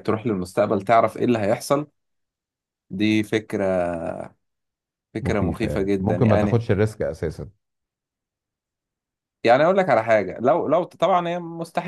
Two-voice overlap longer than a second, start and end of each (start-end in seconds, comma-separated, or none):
5.2-6.6